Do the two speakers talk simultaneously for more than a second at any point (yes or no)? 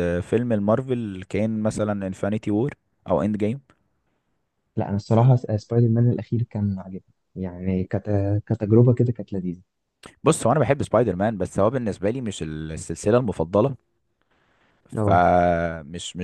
no